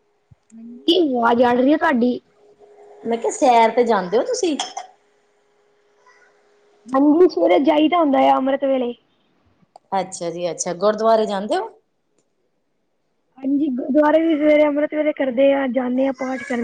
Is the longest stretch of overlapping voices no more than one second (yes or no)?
yes